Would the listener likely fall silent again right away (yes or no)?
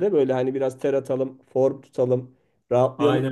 yes